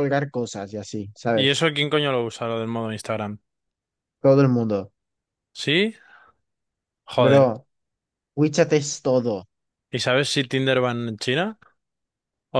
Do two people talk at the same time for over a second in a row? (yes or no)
no